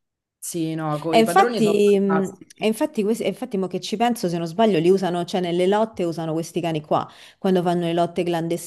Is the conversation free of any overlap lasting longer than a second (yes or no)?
no